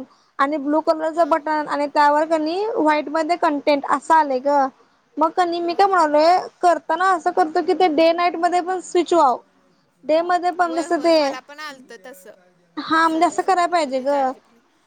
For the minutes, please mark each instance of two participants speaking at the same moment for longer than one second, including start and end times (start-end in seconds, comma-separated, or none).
12.8-14.1